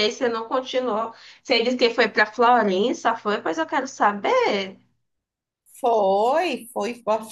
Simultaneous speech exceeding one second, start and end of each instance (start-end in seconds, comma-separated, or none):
none